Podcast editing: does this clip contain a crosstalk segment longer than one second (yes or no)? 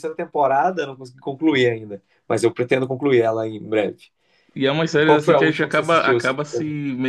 yes